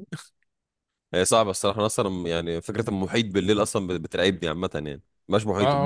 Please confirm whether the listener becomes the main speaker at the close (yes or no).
yes